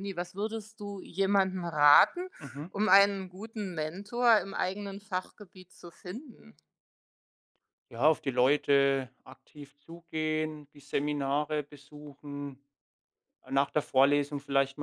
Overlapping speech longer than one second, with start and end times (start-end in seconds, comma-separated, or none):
none